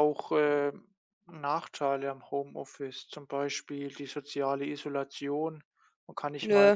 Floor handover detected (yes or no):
no